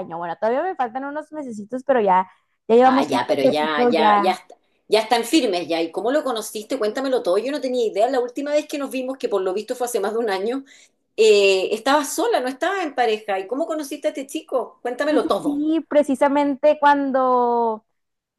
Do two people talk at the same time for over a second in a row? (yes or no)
yes